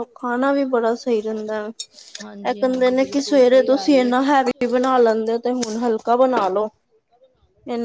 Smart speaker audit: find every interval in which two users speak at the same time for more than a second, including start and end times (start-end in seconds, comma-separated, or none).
2.5-4.1